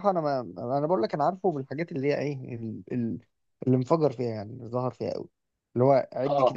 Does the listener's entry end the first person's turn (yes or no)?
no